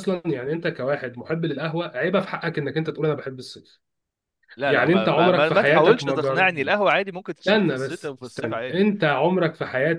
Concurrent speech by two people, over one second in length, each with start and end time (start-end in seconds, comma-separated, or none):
4.7-6.5, 7.5-8.9